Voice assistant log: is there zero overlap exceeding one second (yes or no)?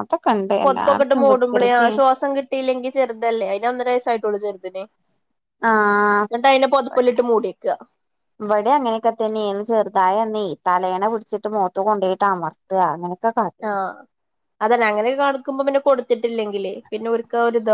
no